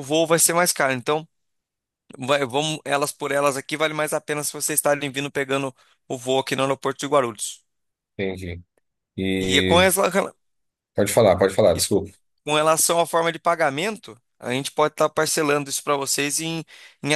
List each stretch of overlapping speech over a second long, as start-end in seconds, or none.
none